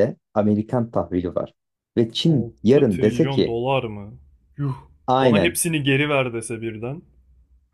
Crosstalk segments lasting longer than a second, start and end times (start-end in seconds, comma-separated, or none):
2.3-3.6